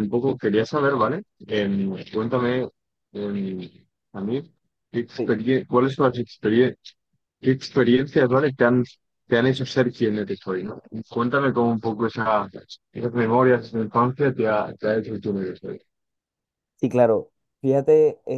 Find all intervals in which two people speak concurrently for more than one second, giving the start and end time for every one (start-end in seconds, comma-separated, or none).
none